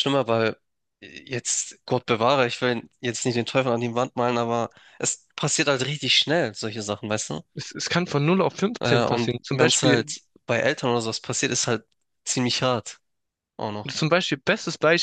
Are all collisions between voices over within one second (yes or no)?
no